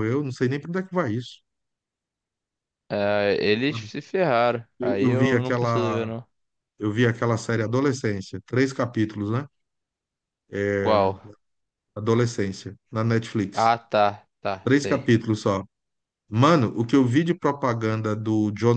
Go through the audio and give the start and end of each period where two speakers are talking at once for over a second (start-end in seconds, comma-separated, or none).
4.8-6.1